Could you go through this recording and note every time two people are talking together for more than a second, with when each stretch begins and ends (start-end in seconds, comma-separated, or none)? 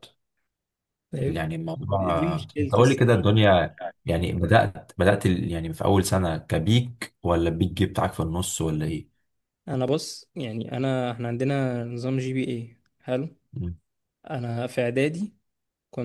1.2-3.2